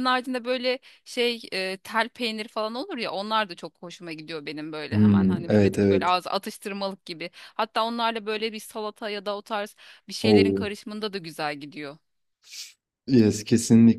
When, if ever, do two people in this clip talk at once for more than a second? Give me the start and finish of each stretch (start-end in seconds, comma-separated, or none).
4.9-6.2